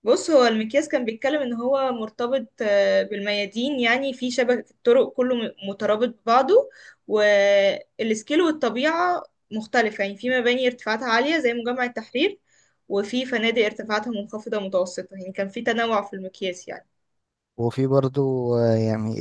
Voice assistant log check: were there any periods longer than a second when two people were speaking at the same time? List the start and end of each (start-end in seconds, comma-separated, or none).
none